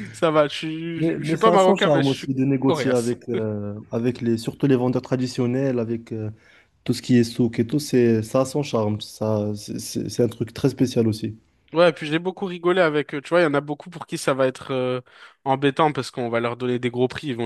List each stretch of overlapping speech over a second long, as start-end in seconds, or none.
1.0-2.9